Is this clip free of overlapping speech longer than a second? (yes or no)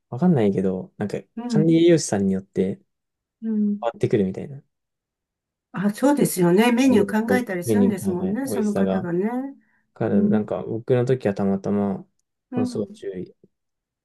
no